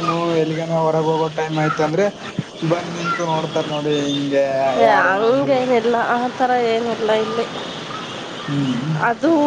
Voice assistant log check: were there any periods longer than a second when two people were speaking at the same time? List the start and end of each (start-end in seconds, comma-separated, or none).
none